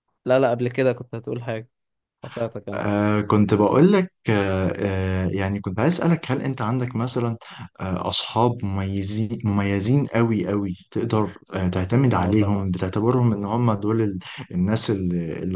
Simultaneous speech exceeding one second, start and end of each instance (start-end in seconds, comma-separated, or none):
none